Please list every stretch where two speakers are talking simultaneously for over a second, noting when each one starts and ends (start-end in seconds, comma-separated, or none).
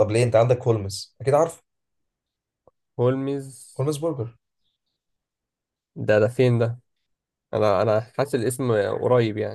none